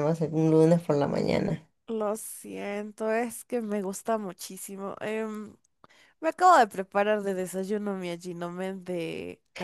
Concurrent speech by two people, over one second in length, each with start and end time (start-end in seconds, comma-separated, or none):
none